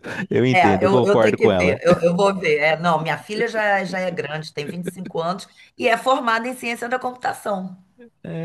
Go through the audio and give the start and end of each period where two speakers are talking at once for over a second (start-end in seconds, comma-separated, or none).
0.5-1.8